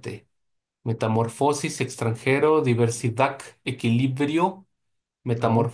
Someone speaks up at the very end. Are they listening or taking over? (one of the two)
listening